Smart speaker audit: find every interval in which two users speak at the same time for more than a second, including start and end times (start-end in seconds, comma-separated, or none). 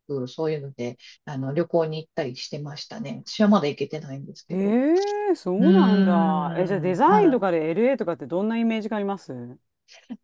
5.6-7.4